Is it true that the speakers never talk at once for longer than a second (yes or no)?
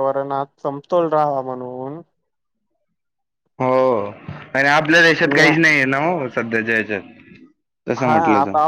yes